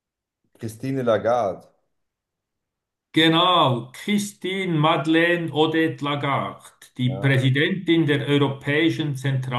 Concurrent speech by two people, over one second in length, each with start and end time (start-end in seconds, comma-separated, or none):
none